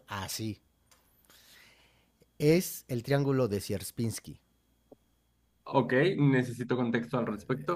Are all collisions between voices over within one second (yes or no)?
yes